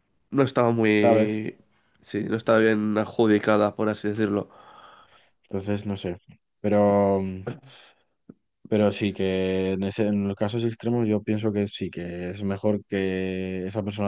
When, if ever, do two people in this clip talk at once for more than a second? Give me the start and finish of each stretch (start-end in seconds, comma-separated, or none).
none